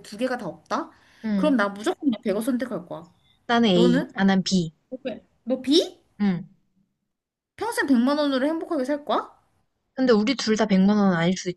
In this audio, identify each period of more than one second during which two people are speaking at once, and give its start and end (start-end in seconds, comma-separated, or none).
none